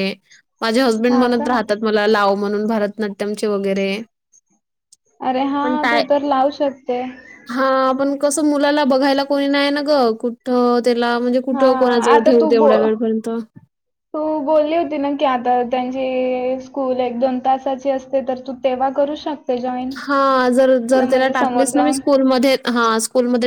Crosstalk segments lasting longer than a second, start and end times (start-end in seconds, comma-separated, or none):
none